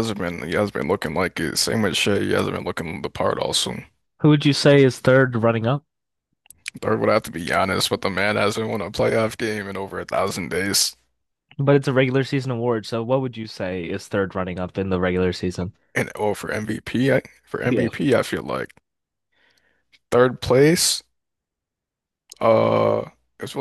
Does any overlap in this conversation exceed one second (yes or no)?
no